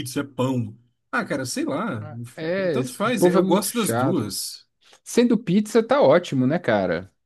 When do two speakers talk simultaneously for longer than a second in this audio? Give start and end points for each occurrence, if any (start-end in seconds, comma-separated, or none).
2.7-4.3